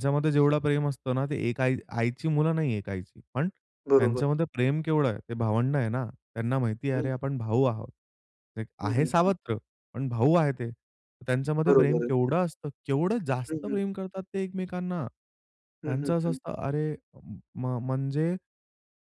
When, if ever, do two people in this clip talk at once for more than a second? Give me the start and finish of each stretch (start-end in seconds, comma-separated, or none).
none